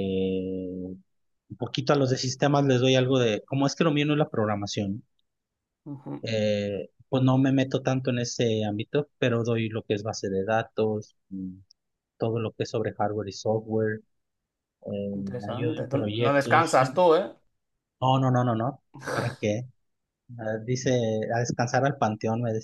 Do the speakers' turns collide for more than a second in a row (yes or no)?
yes